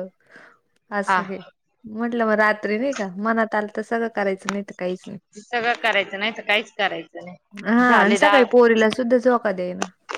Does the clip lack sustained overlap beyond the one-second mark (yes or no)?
yes